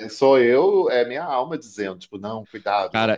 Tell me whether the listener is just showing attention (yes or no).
no